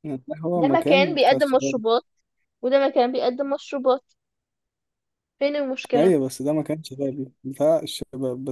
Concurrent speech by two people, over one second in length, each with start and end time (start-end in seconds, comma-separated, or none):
0.6-1.8